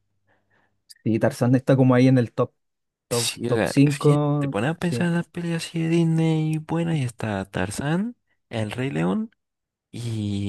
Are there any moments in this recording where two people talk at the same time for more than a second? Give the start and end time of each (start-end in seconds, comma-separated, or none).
3.1-5.1